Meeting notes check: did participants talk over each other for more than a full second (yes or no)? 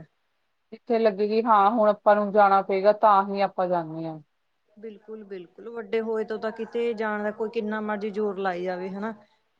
no